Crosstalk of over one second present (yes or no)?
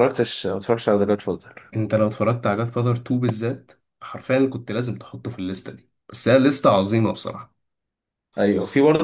no